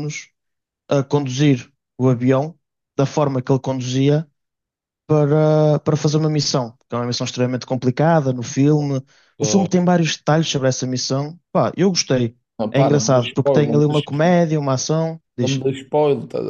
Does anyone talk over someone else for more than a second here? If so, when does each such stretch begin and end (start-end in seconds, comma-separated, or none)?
12.6-14.2